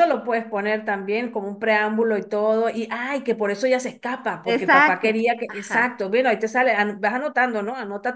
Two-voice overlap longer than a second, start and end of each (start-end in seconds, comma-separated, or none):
4.5-6.0